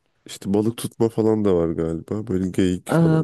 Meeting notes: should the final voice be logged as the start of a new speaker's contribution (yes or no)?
yes